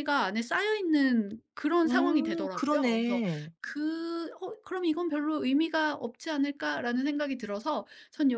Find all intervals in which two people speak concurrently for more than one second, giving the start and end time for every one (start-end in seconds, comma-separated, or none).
1.9-3.2